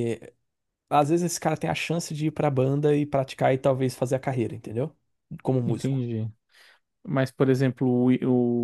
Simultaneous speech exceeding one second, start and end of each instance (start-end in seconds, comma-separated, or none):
none